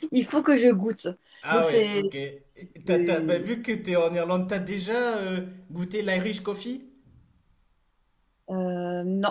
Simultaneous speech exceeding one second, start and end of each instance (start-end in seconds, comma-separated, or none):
none